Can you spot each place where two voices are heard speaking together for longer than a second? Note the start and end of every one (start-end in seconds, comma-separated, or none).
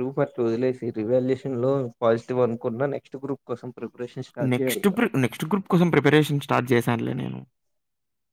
none